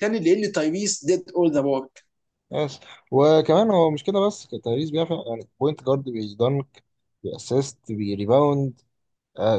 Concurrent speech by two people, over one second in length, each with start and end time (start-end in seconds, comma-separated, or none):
none